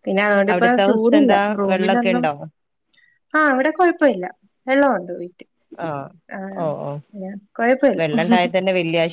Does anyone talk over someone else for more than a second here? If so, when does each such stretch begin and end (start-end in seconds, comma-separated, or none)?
0.5-2.3